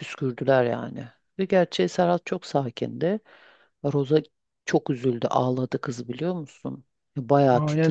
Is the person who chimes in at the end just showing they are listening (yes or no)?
no